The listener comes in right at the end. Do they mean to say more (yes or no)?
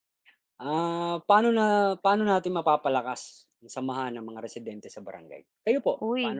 yes